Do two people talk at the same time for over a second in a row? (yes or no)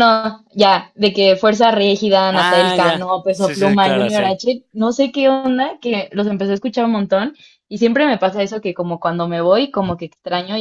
yes